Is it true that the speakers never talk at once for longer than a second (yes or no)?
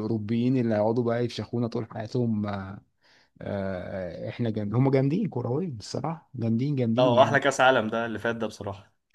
yes